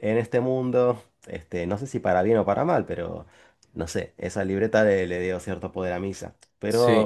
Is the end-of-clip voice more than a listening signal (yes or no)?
yes